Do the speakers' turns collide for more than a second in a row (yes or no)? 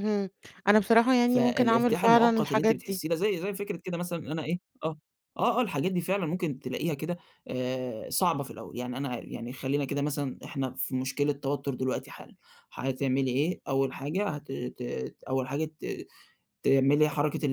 yes